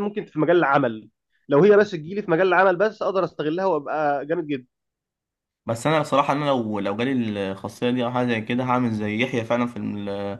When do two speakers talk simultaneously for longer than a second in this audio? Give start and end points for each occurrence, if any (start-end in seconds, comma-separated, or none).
none